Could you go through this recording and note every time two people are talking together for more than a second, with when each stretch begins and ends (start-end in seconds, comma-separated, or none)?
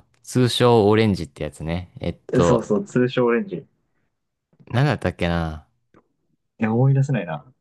none